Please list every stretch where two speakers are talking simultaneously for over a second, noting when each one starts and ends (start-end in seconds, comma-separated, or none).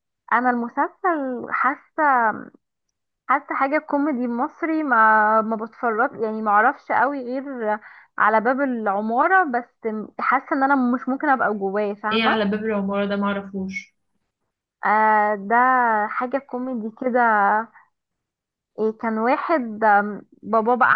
none